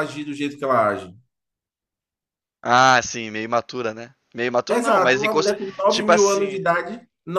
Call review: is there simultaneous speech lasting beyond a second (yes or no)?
yes